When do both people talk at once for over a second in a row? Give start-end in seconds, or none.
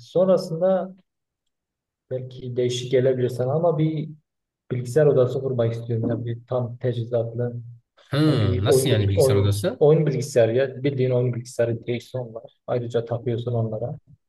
8.3-9.8